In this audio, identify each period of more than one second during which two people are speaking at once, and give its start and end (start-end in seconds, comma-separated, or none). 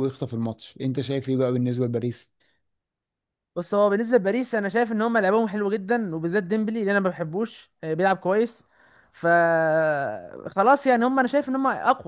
none